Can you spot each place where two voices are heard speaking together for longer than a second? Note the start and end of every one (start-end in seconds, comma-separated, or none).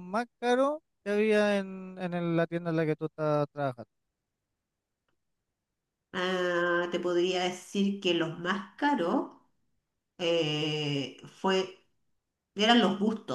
none